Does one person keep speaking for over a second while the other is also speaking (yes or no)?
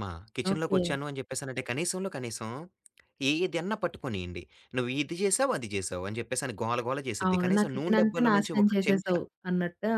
yes